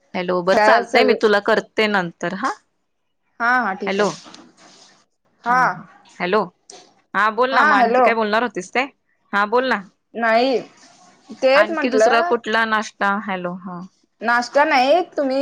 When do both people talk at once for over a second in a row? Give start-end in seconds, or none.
none